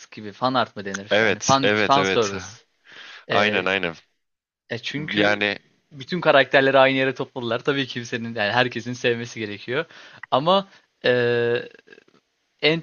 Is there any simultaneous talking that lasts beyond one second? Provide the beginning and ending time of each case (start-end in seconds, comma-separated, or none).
1.1-2.3